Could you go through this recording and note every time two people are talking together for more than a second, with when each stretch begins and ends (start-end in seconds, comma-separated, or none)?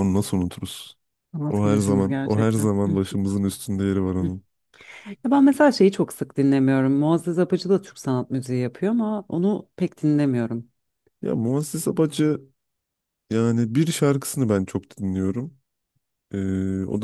1.5-3.0